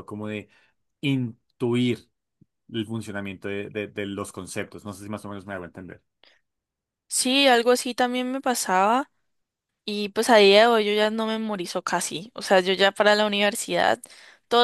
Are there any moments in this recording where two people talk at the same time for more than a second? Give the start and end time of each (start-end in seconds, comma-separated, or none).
none